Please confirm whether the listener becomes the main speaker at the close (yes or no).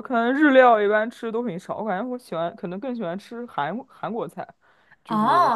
yes